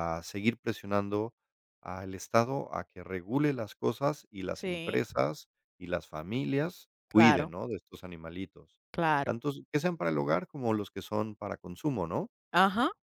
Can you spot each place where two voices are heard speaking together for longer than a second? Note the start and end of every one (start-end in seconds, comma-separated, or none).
none